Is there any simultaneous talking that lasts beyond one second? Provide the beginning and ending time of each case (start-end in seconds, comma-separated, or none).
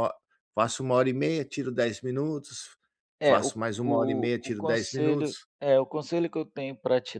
3.2-5.5